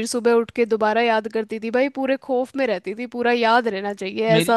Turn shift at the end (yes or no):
yes